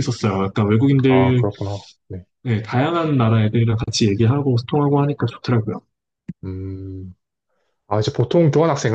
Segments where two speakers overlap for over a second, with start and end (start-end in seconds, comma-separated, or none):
none